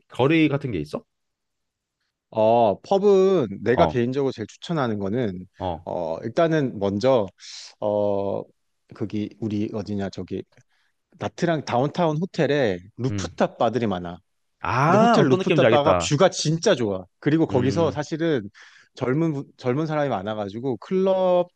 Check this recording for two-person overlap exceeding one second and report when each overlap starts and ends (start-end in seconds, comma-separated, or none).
14.9-16.1